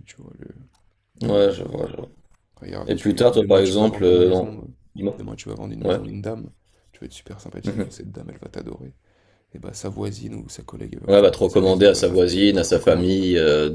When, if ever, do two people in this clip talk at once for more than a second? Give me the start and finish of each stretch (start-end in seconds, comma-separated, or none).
2.9-4.5, 11.1-13.2